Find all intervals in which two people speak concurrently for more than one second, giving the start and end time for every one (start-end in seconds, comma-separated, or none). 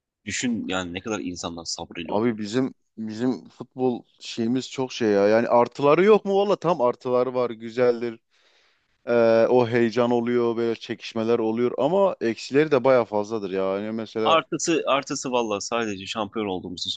none